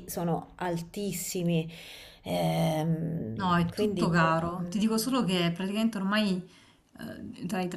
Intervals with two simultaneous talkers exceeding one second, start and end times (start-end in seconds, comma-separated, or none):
3.4-4.8